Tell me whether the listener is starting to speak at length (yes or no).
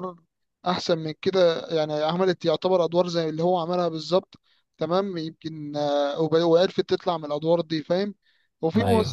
no